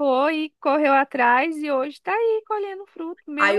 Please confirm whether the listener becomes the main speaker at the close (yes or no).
yes